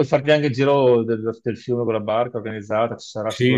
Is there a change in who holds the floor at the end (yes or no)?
yes